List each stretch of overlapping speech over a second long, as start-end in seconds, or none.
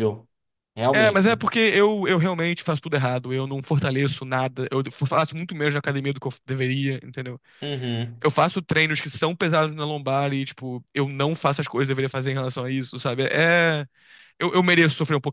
none